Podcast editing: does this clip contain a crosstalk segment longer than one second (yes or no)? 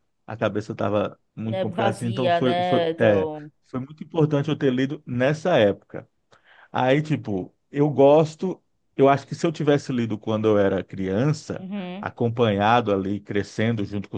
yes